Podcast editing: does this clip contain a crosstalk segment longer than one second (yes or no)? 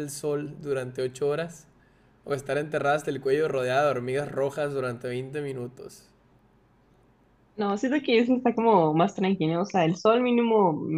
no